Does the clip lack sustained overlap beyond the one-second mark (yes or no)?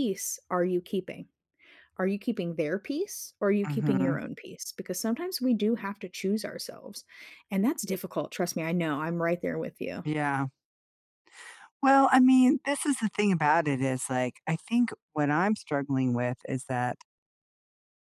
yes